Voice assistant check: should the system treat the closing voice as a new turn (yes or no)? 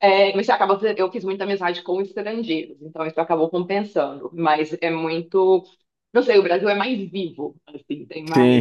no